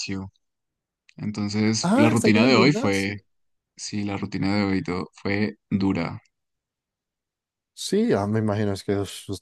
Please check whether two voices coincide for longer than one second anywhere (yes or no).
yes